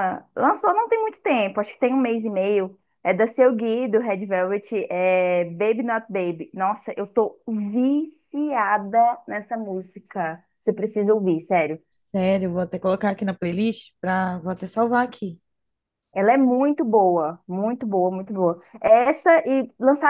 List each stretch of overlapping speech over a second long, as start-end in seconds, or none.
none